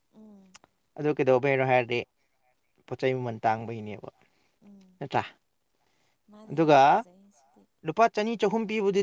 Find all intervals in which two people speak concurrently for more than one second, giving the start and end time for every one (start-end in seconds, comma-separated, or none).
none